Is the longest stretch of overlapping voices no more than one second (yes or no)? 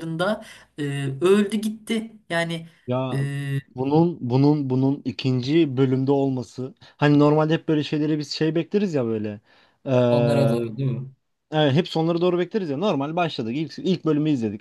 yes